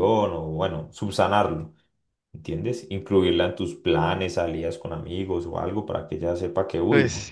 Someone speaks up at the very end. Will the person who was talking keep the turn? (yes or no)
yes